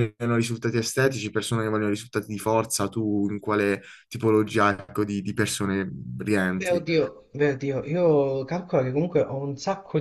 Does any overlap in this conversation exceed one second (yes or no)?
no